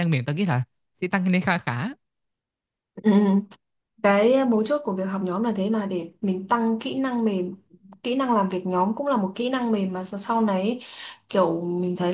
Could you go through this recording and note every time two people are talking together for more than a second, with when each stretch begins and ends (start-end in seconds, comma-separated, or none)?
none